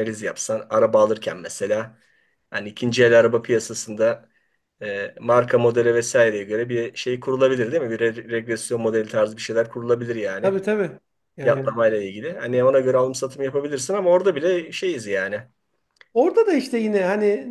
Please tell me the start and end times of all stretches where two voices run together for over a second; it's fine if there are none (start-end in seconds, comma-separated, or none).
none